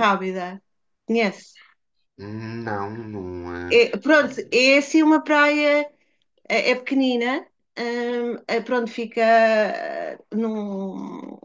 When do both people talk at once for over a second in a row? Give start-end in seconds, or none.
none